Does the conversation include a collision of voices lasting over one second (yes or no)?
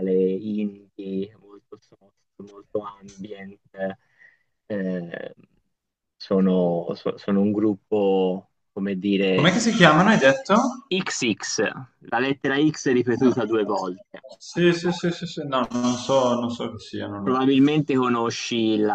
no